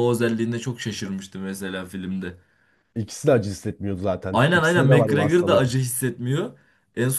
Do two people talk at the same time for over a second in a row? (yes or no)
yes